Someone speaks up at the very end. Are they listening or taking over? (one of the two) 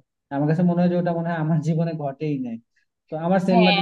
listening